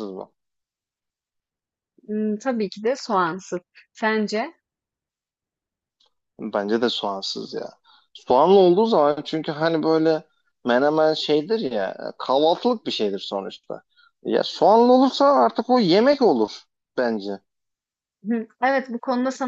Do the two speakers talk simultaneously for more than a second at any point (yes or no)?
no